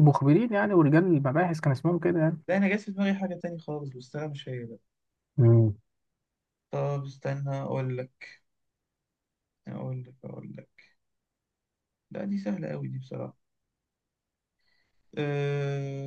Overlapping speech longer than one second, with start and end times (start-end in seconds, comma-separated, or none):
none